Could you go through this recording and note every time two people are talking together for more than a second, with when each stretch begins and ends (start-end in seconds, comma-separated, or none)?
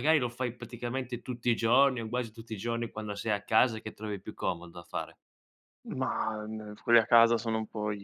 none